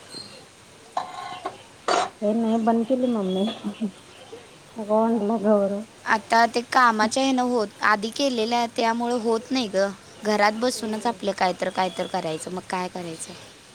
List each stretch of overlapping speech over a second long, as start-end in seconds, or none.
none